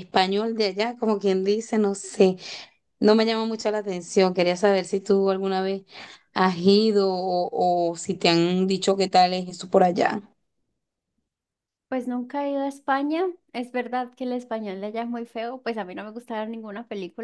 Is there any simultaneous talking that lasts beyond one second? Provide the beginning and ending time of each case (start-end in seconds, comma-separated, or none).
none